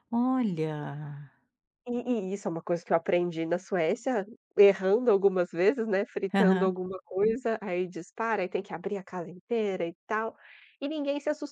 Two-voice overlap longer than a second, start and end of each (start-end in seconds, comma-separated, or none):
none